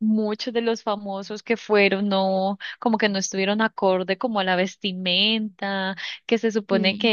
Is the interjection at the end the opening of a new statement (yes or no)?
no